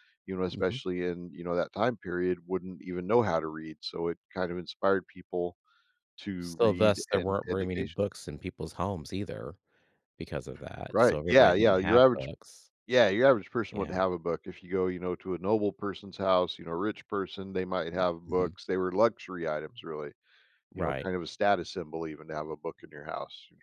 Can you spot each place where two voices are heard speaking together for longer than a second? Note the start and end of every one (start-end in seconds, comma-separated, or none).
6.4-8.1, 10.9-12.3